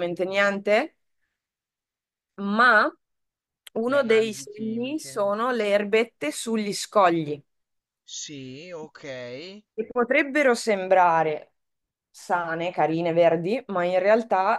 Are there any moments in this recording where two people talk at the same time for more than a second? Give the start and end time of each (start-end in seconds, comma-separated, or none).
3.9-5.1